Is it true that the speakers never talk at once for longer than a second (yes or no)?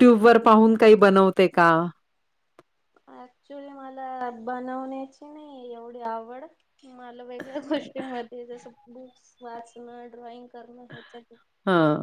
yes